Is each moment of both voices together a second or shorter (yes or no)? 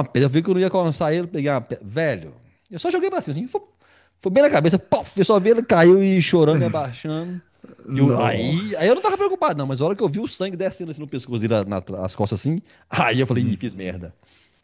no